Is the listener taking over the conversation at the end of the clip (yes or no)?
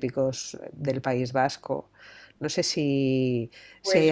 no